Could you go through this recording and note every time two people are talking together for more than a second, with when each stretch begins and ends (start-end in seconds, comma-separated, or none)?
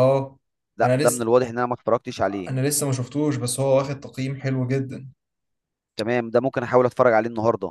none